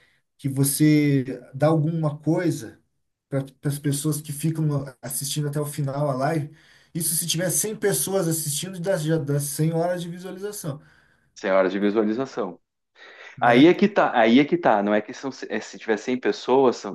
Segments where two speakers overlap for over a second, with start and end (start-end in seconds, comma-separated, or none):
none